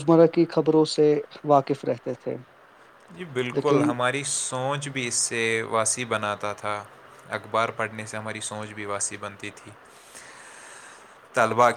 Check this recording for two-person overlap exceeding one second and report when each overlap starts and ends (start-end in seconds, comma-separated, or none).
none